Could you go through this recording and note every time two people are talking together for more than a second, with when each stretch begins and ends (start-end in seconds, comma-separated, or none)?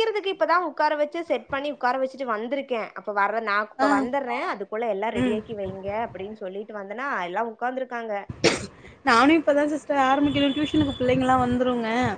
none